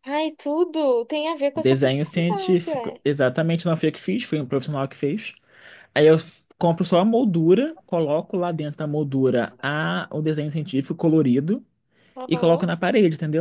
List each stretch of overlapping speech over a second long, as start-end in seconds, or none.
1.5-3.0